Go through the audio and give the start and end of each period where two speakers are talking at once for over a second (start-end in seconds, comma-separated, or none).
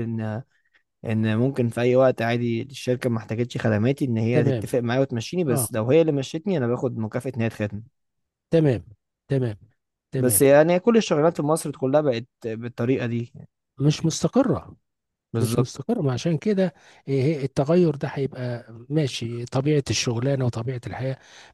none